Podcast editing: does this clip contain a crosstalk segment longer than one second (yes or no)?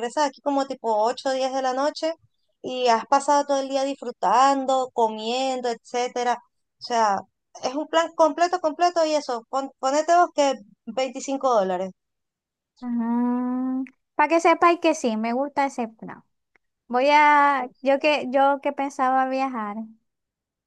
no